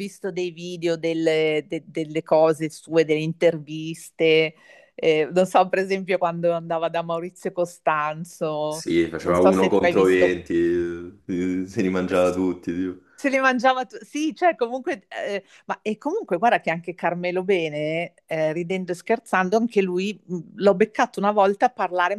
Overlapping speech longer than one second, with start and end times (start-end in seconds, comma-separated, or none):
8.7-10.4